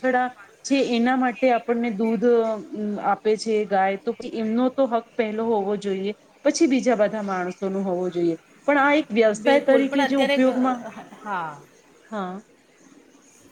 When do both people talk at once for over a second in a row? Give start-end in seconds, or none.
9.4-10.8